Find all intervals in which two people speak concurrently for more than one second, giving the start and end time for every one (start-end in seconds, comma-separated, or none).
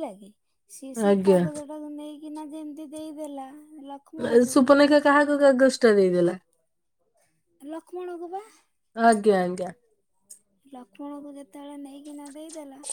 none